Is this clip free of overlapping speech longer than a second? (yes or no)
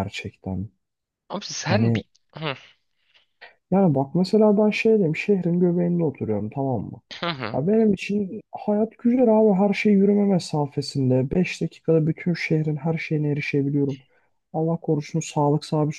yes